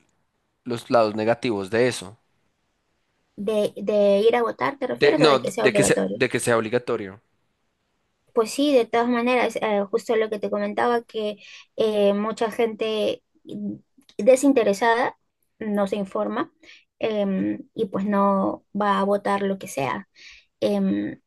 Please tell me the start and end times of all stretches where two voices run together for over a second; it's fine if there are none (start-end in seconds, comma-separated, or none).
4.9-6.2